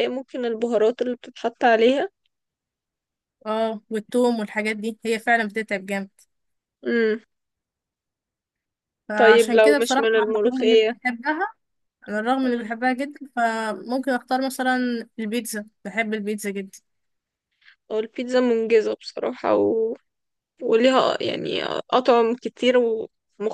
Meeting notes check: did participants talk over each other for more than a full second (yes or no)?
yes